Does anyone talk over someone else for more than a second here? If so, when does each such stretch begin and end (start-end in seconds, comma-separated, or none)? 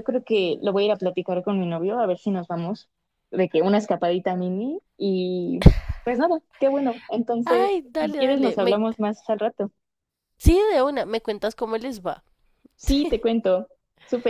7.5-8.8